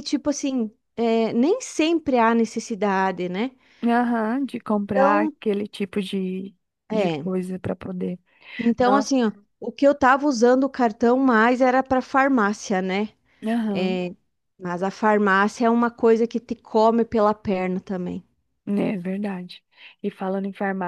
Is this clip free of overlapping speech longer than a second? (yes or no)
yes